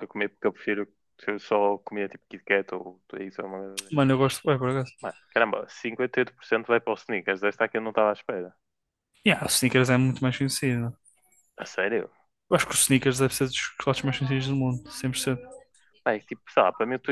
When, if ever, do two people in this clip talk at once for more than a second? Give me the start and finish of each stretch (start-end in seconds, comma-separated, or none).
none